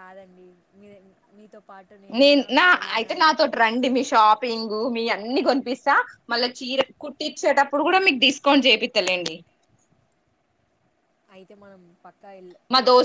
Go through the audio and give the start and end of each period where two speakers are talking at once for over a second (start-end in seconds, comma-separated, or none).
none